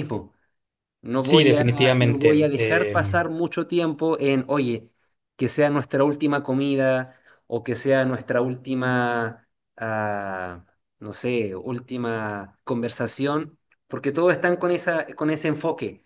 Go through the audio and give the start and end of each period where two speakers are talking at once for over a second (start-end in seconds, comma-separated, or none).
1.2-3.2